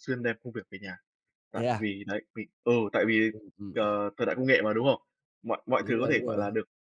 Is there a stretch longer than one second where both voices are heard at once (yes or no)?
no